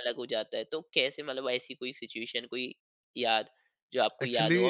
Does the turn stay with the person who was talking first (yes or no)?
yes